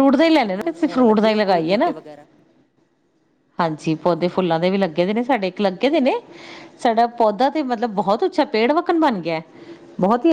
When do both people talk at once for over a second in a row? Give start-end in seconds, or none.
0.6-1.9